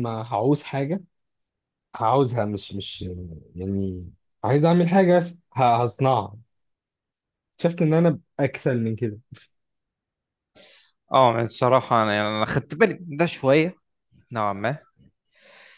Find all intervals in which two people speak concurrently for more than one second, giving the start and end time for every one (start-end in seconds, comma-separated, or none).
none